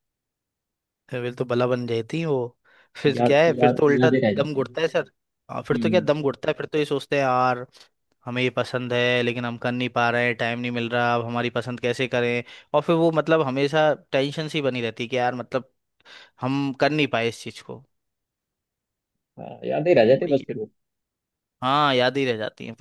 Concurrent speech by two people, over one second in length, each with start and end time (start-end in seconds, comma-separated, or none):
3.1-4.7